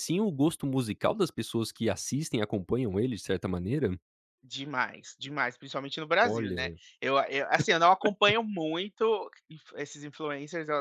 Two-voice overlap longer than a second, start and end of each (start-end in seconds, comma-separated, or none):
none